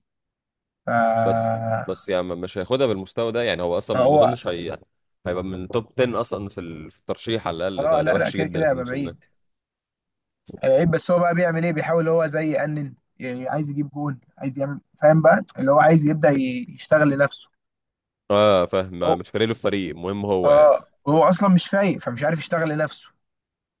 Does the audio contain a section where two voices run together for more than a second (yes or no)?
yes